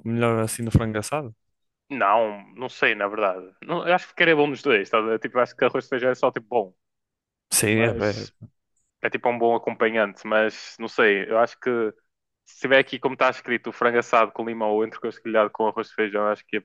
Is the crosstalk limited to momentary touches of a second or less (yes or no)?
yes